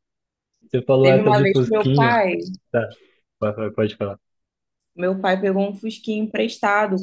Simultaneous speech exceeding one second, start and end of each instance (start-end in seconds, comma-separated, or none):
1.0-2.2